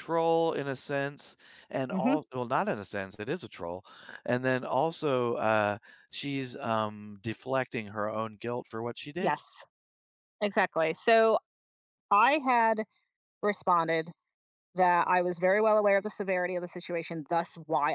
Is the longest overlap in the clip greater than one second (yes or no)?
no